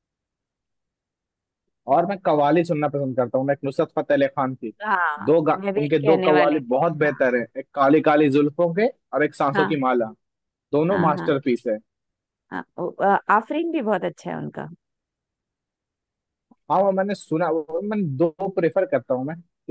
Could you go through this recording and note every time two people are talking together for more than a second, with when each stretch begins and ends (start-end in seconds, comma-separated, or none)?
5.2-7.2